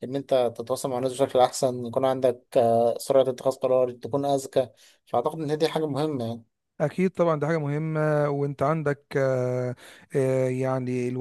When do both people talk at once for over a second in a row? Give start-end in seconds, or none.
none